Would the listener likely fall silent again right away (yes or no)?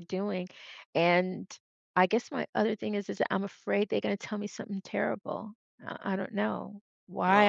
no